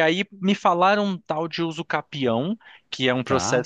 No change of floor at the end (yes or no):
yes